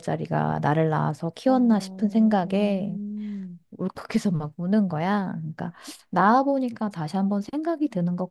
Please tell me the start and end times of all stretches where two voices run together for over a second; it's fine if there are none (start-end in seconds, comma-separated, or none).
1.4-3.0